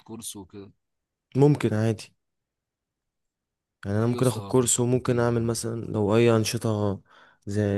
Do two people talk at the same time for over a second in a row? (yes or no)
yes